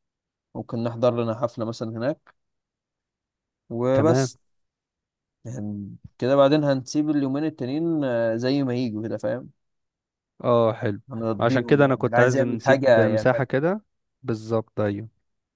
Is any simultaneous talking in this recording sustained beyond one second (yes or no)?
yes